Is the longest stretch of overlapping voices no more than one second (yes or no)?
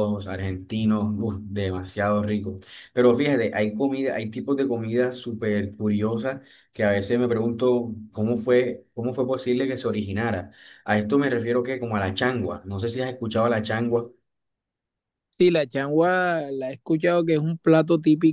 yes